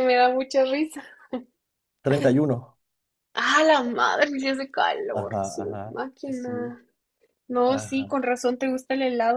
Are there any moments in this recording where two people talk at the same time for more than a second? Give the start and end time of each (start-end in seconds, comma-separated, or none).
5.1-6.8